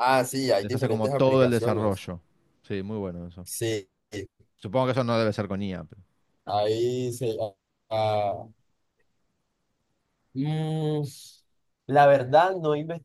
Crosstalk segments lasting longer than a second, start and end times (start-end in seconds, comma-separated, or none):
0.6-2.1